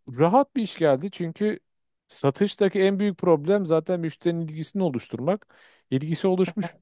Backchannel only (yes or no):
yes